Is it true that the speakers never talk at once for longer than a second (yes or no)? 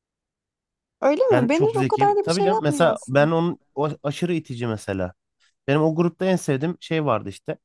no